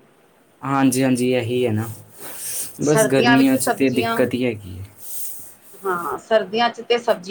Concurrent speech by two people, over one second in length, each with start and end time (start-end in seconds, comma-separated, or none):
2.9-4.2